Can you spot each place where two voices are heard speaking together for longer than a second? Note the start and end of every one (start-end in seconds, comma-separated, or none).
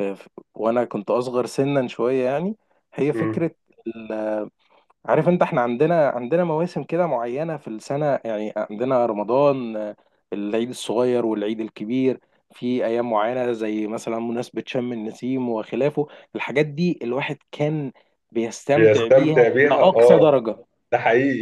18.8-20.4